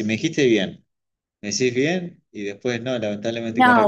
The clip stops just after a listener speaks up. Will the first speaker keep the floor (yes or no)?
no